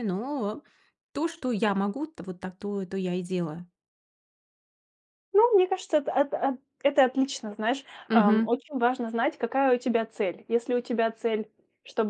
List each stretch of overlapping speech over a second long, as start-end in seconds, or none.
none